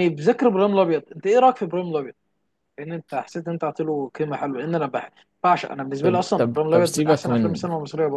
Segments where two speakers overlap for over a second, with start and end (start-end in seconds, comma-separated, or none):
6.0-7.7